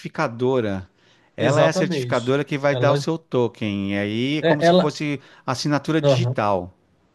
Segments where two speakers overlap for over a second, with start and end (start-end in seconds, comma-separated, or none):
1.4-3.1